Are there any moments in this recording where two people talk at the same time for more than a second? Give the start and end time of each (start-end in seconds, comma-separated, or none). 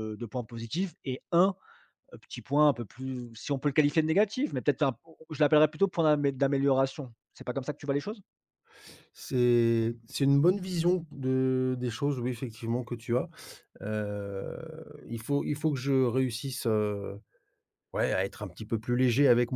none